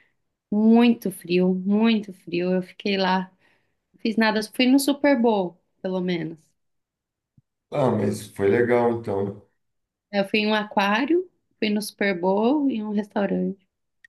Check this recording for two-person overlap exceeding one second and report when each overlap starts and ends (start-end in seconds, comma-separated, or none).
none